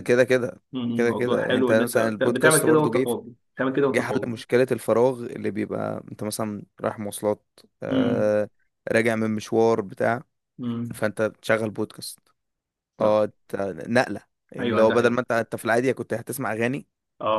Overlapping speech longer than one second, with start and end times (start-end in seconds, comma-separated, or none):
0.9-3.1